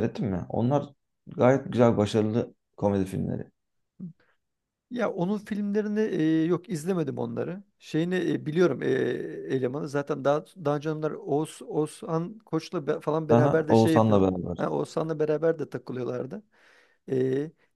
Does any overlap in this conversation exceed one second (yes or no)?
yes